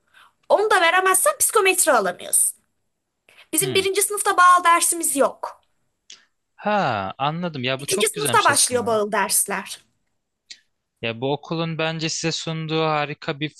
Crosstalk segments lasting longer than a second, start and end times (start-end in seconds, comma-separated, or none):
7.8-9.0